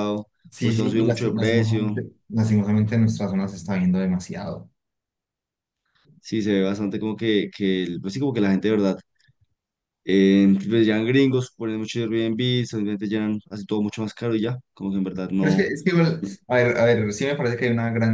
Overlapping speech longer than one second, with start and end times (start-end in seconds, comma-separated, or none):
0.5-2.0